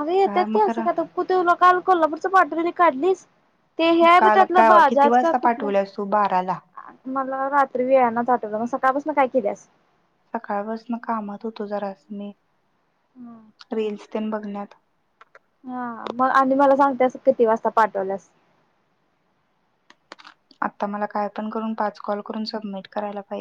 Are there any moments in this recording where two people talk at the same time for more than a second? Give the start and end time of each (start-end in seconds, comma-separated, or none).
4.2-5.7